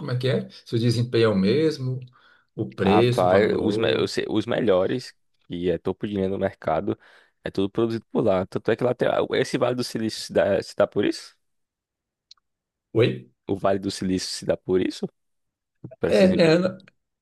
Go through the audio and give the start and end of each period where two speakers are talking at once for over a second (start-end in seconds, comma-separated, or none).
2.8-4.1